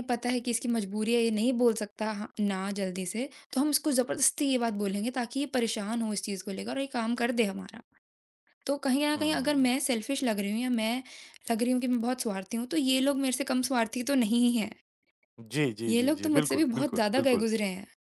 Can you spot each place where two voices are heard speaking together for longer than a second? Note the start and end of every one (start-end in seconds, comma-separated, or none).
15.9-17.4